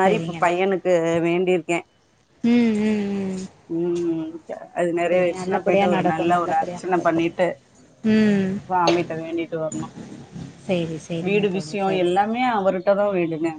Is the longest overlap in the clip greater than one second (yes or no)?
yes